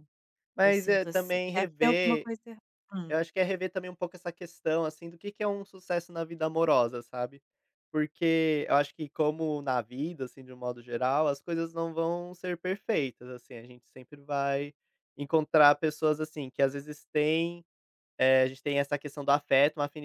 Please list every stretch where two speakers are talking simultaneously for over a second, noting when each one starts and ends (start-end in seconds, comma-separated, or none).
0.6-2.3